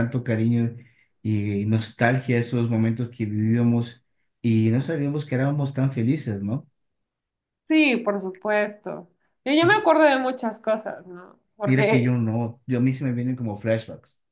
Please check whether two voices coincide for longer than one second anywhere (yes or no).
no